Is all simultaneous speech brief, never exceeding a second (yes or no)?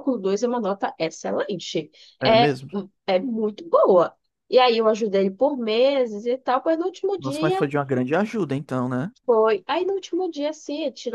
yes